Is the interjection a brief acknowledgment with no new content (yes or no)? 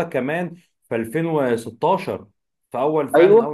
no